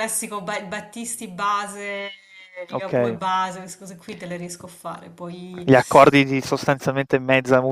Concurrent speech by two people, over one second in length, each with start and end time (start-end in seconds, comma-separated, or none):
none